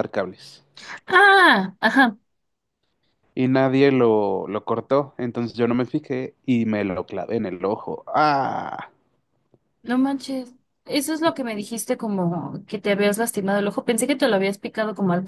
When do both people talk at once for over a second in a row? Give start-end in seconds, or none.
none